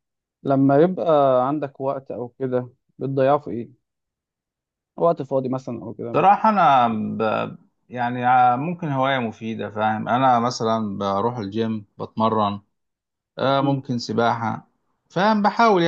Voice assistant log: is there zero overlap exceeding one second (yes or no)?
yes